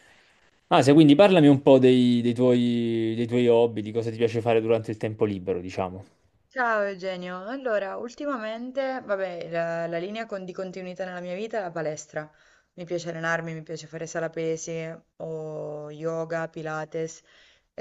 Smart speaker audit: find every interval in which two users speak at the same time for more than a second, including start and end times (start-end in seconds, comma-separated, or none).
none